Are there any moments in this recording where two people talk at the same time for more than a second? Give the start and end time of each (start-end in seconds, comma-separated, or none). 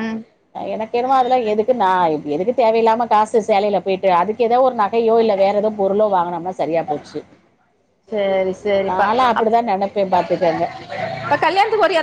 none